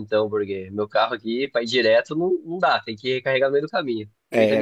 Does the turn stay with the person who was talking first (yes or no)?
no